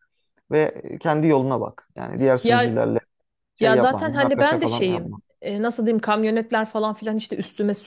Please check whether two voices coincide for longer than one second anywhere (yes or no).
yes